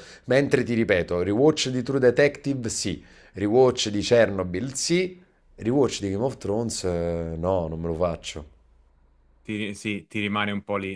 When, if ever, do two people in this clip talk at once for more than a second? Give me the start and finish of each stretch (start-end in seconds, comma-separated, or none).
none